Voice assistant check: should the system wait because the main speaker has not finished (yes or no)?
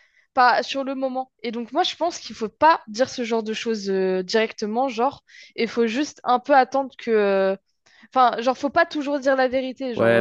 no